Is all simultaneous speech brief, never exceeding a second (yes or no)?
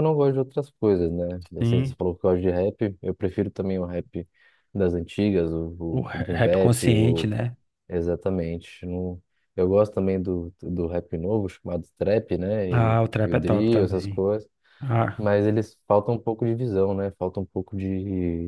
no